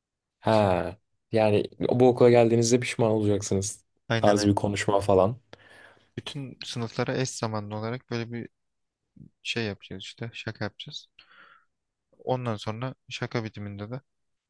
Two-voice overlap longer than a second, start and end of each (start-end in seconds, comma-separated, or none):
none